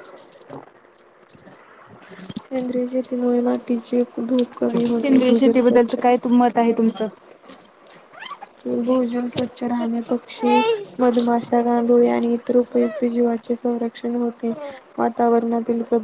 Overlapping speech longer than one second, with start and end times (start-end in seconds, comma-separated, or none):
4.7-6.0